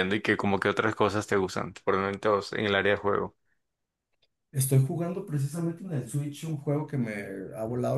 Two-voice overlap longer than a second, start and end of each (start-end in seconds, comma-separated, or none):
none